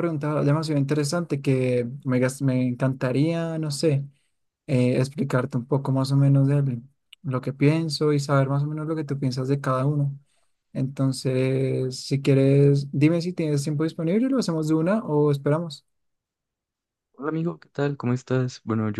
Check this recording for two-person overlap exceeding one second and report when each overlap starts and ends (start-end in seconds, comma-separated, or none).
none